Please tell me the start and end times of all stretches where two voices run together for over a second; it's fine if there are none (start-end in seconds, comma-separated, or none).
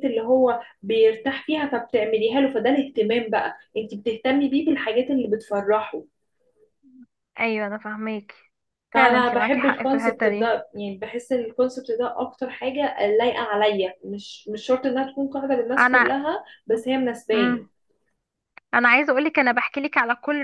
8.9-10.6